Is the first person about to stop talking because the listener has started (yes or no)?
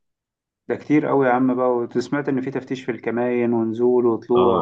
yes